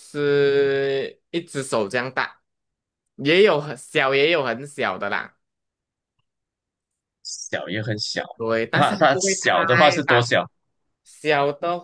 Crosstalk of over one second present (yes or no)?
yes